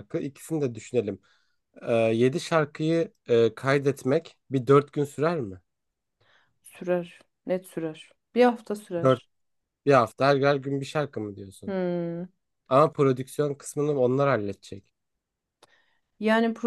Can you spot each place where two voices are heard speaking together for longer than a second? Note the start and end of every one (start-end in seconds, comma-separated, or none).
none